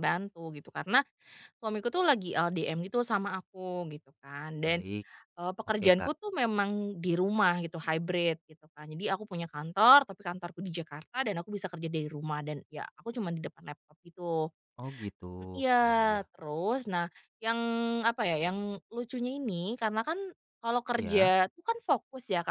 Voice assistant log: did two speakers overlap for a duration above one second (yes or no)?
no